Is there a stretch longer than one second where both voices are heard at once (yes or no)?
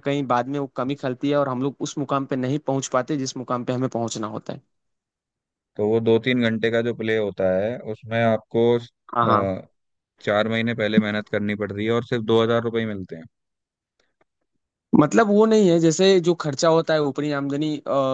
no